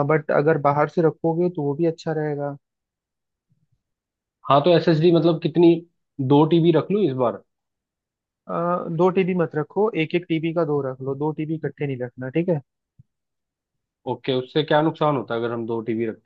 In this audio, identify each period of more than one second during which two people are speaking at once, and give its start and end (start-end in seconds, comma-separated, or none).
none